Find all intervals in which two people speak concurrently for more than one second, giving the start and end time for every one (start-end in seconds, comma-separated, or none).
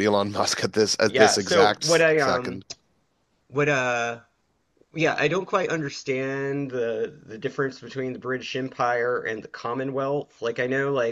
1.1-2.6